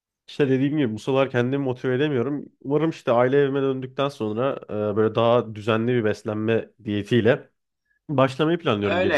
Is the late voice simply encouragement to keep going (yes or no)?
no